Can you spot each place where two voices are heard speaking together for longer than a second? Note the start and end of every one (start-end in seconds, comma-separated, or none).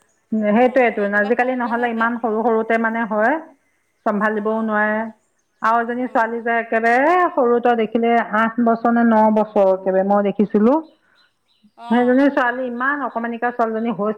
0.6-2.1